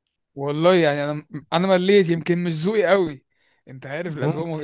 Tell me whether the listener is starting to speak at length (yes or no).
no